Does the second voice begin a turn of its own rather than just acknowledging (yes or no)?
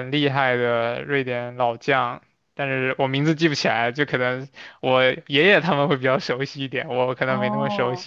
yes